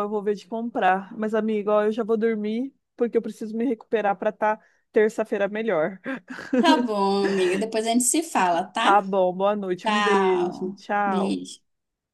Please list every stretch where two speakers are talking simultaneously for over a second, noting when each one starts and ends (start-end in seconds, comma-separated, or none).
9.8-11.4